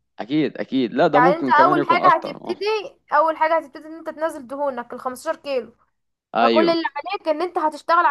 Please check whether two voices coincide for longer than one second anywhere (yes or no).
yes